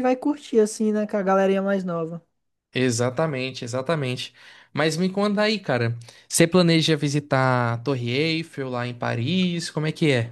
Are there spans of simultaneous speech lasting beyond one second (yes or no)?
no